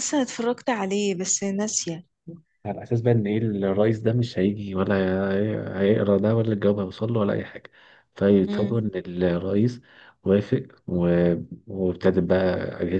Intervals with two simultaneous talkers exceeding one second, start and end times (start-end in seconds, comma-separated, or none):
none